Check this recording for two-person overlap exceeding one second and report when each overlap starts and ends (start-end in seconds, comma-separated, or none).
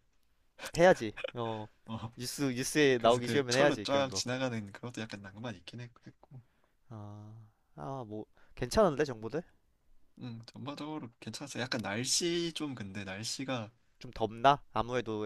3.0-4.2